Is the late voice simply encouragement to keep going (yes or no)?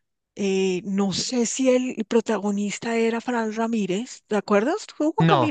no